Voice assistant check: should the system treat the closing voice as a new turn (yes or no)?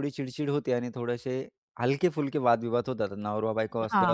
yes